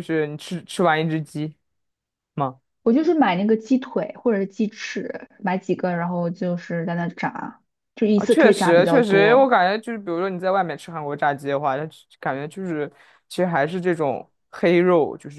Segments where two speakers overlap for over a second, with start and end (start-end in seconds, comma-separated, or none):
8.1-9.5